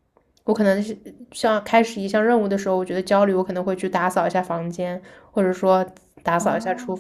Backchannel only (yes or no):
no